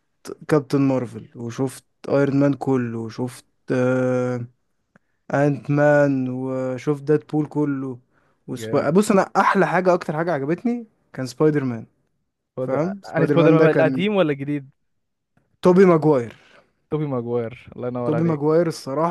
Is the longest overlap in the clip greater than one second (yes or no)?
yes